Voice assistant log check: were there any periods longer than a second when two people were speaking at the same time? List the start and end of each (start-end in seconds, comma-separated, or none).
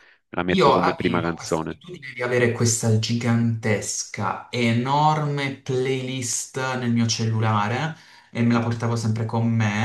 0.5-1.8